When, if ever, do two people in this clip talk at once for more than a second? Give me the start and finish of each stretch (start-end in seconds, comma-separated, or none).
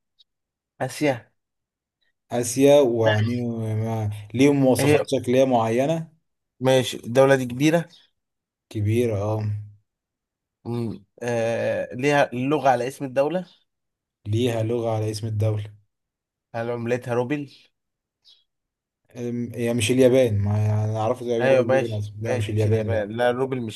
21.4-23.1